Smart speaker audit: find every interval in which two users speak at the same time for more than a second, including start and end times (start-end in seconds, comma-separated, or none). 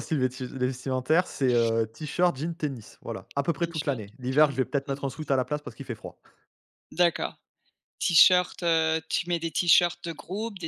3.6-5.2